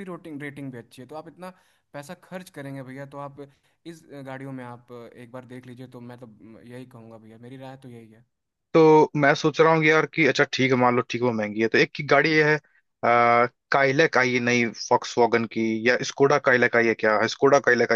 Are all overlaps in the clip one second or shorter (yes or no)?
yes